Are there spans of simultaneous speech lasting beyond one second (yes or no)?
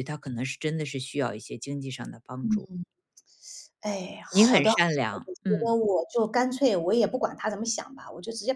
yes